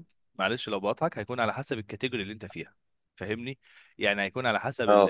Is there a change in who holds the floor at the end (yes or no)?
no